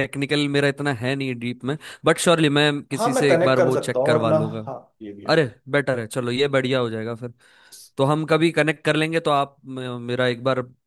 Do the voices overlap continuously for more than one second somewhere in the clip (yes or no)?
yes